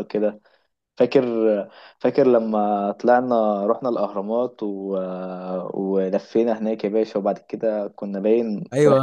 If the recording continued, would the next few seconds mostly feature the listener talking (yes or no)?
yes